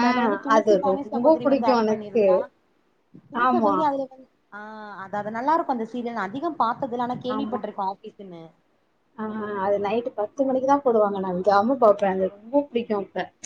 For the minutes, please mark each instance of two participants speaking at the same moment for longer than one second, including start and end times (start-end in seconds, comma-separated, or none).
0.6-2.2